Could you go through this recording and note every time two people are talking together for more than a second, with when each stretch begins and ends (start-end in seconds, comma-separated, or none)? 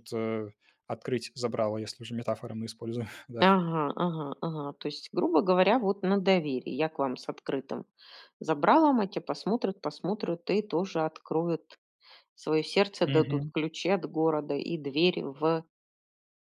none